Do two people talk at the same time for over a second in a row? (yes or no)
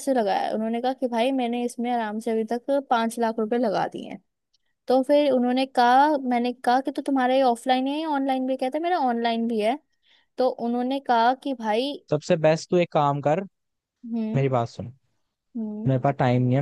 no